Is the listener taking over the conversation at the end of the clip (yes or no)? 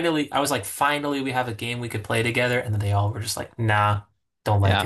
yes